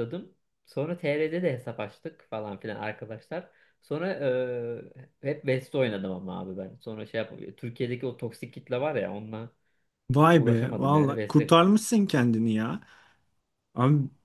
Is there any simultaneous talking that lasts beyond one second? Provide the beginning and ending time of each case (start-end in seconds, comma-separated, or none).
10.3-11.6